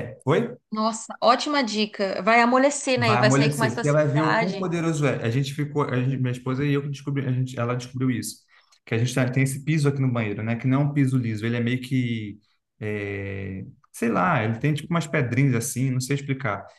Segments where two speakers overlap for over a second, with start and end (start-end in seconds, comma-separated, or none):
3.0-4.7